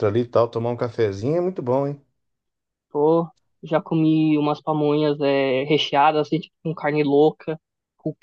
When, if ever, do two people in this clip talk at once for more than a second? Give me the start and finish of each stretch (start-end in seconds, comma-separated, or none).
none